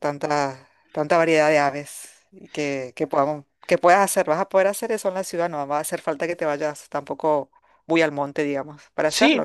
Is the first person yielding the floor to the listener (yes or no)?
yes